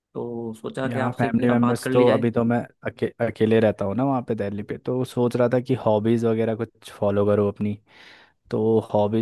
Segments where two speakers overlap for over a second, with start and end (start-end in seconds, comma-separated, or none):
0.8-2.3